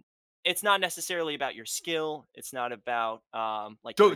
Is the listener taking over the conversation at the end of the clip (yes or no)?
yes